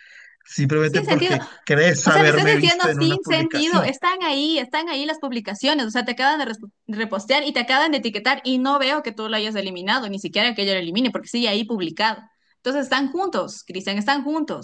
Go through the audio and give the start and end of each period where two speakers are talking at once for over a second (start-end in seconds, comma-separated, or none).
2.0-3.9